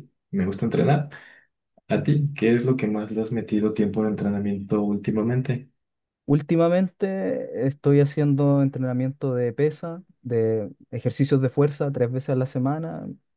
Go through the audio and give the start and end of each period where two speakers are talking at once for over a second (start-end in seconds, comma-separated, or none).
none